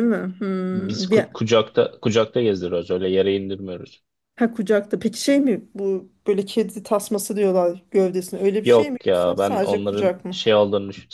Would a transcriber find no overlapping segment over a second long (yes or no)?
no